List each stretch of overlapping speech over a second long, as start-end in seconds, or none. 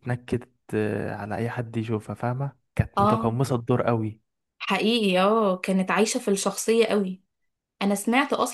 none